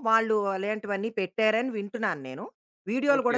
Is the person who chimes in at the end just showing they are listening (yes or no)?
no